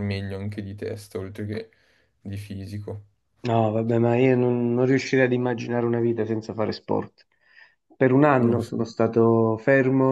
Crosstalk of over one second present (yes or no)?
no